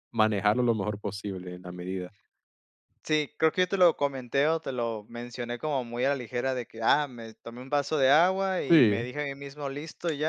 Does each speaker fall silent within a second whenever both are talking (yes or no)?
yes